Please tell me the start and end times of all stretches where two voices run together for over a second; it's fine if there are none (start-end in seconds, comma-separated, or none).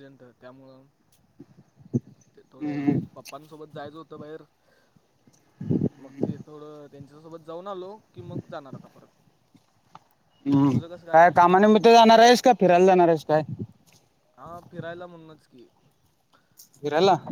none